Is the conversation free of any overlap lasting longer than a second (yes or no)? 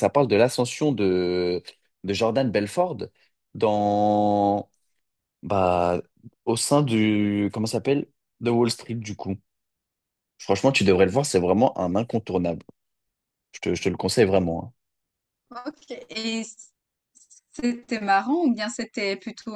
yes